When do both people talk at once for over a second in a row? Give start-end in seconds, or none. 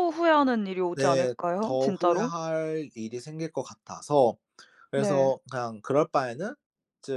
0.9-2.3